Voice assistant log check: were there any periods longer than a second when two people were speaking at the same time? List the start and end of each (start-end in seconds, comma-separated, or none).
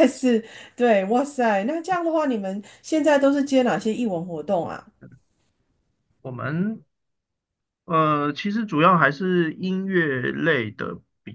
none